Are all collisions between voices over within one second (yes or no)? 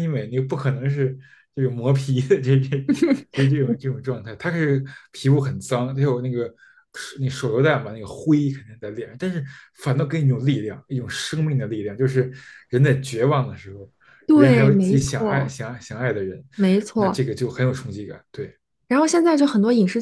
no